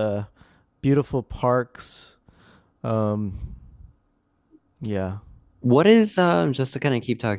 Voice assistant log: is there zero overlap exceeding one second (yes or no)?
yes